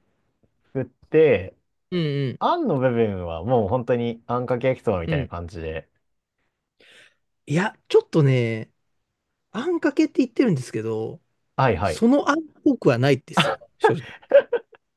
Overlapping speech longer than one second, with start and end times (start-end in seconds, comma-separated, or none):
none